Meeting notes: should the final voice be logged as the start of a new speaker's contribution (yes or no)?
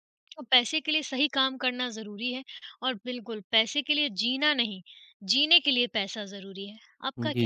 yes